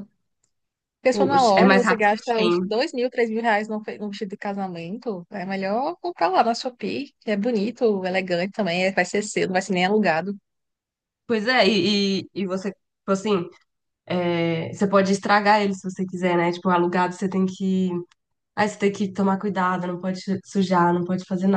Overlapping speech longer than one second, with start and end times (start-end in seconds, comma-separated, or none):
1.1-2.6